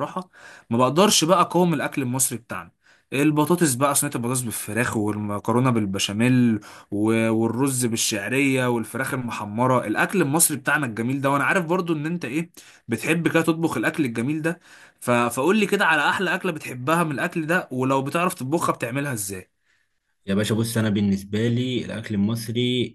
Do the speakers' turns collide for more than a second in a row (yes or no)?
no